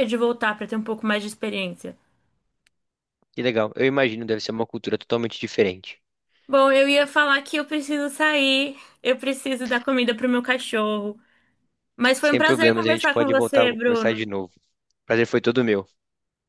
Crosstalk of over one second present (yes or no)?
yes